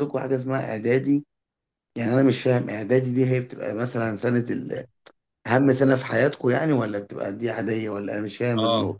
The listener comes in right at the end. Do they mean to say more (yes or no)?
yes